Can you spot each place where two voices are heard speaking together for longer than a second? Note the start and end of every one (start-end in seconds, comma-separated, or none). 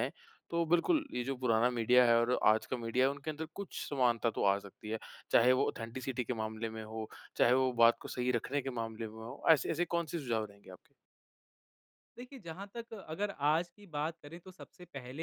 none